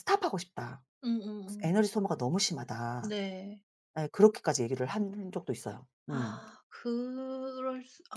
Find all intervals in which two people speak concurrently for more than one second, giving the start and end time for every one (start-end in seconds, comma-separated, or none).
none